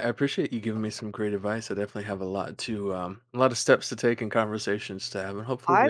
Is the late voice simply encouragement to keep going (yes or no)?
no